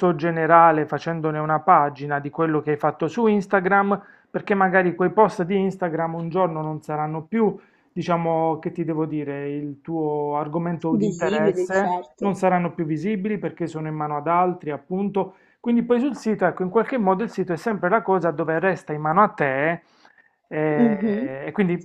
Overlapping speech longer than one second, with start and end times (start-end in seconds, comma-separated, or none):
11.0-12.4